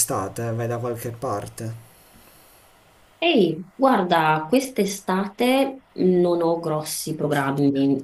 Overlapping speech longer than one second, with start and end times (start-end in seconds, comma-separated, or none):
none